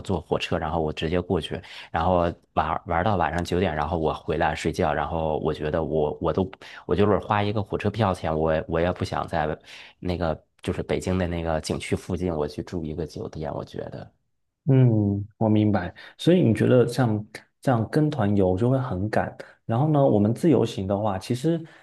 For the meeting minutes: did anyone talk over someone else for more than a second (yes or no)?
no